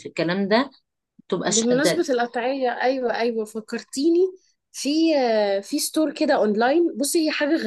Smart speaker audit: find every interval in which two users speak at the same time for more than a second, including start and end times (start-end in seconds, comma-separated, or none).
none